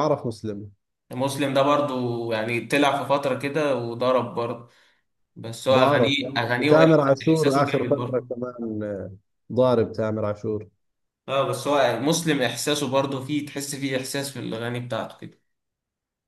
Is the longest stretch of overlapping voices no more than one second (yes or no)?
no